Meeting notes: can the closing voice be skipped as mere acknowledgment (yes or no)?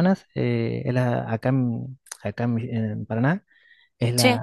yes